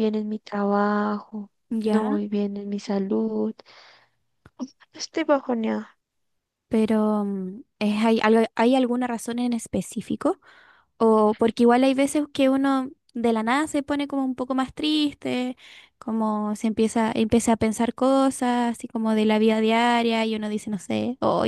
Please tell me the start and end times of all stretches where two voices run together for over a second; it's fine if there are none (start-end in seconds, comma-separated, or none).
none